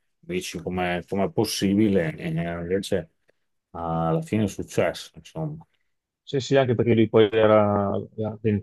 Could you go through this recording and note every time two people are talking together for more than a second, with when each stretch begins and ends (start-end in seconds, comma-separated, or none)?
none